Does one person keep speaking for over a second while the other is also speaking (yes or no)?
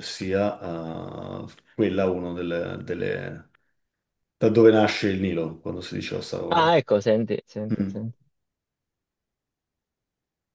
no